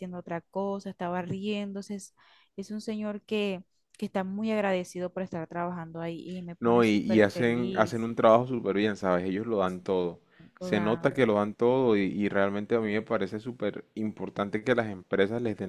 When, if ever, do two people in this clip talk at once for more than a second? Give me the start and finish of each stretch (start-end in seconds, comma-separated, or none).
6.6-8.1